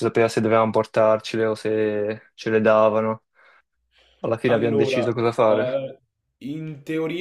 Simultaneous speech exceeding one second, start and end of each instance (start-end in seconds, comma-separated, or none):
4.5-5.8